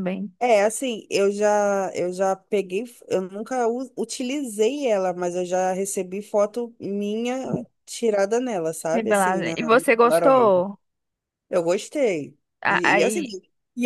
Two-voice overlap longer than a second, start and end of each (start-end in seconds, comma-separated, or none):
8.9-10.6